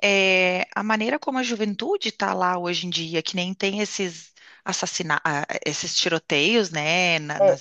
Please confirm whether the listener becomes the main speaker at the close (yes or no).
no